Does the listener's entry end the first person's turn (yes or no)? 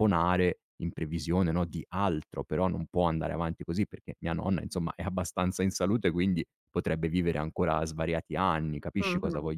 yes